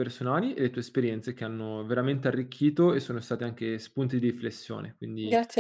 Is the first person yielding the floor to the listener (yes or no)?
yes